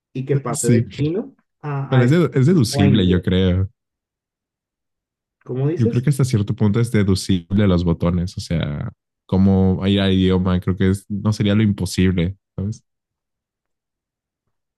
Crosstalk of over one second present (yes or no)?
yes